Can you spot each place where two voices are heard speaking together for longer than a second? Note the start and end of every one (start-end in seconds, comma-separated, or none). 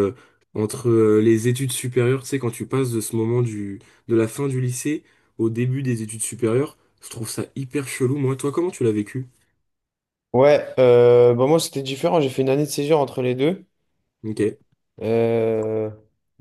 none